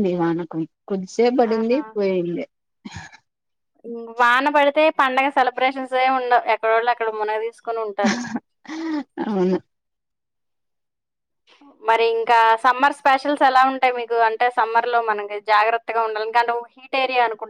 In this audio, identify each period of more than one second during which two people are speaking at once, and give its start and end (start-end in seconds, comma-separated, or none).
none